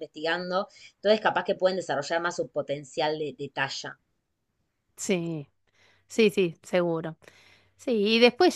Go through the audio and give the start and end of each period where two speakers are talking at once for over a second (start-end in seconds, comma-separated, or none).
none